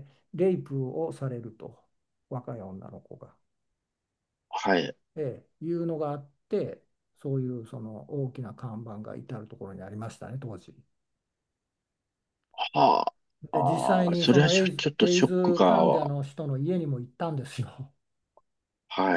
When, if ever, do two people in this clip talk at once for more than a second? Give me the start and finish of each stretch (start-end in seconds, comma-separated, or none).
13.5-16.1